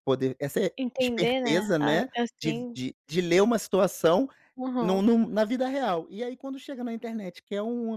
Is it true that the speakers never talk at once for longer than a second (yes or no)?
no